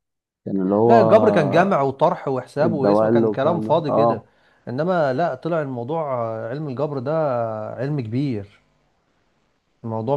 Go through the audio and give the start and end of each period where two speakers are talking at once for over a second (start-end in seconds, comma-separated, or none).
2.6-4.2